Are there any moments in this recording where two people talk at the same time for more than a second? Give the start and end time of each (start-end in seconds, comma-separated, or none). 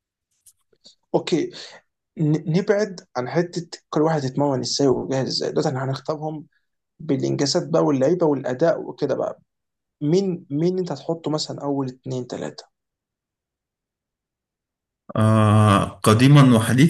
none